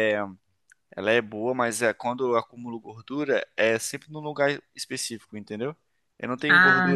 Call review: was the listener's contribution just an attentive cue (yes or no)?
yes